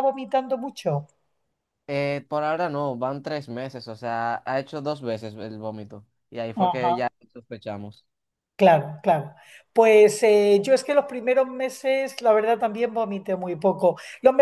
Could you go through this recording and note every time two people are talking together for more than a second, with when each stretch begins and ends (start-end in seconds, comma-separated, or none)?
none